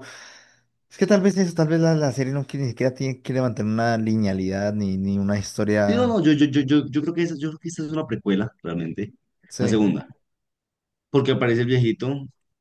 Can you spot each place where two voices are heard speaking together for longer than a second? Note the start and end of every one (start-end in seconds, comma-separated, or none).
none